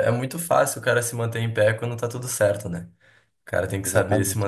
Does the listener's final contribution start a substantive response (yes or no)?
no